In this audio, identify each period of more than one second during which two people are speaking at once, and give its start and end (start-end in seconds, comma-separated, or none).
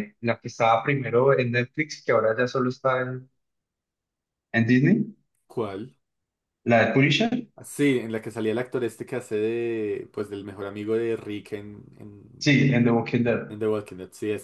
none